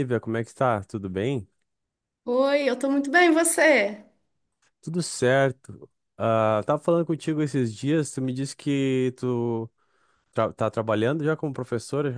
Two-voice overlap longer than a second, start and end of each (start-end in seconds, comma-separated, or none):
none